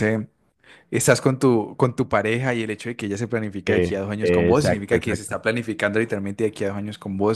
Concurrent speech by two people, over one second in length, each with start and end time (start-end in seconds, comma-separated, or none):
3.7-5.4